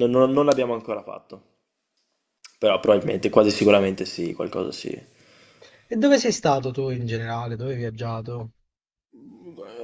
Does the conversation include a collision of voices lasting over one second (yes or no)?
no